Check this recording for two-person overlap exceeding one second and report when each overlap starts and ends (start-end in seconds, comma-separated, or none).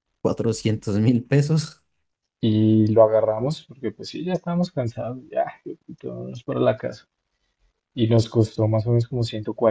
none